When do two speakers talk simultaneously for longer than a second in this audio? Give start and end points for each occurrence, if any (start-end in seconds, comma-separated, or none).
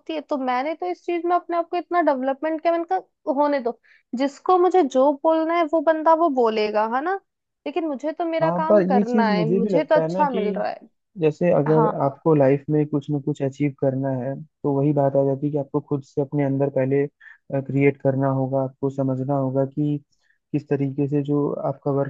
8.4-10.4